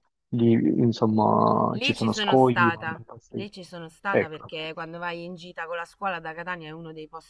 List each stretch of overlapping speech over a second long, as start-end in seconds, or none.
1.7-3.4